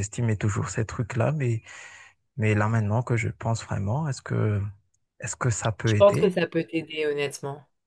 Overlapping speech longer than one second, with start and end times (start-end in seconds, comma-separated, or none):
none